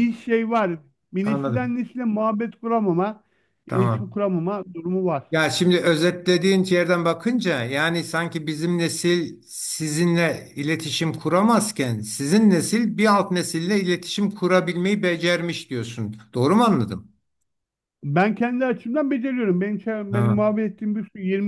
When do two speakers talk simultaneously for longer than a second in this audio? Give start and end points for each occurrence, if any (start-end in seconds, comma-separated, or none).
none